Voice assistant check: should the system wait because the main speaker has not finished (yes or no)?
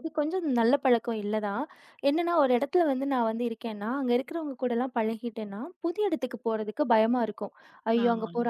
yes